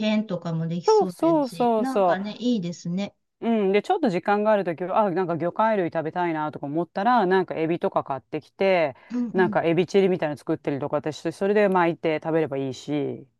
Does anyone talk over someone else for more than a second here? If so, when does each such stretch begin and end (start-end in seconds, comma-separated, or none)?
0.9-2.4